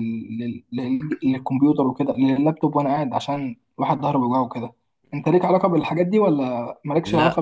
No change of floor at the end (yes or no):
no